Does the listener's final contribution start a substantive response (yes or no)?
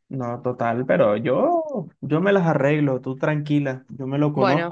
no